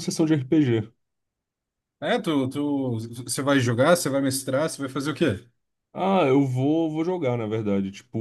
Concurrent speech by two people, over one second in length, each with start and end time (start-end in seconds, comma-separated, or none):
none